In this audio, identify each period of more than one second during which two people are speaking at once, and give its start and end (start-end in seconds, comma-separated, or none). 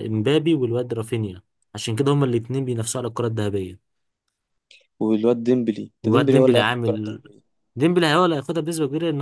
6.0-7.2